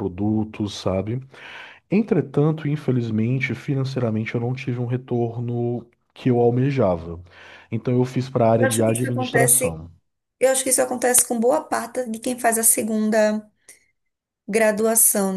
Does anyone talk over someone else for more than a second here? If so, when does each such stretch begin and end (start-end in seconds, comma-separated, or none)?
8.6-9.8